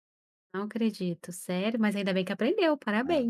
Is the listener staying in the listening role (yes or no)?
no